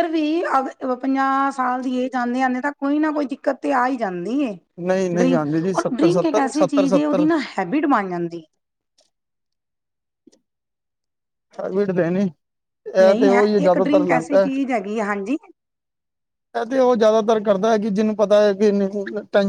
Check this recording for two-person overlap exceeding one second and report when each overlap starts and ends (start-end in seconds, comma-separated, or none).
5.2-7.2